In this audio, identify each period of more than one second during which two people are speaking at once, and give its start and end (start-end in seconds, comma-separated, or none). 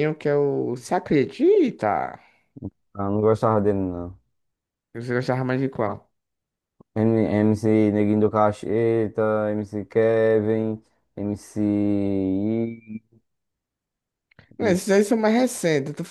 none